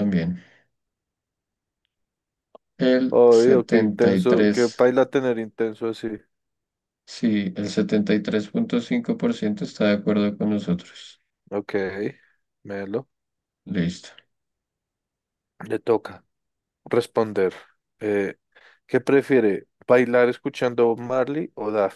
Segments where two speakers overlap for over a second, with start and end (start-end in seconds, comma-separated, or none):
3.1-4.8